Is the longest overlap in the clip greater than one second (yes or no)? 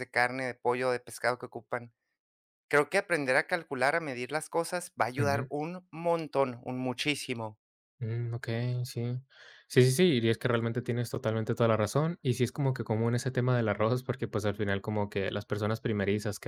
no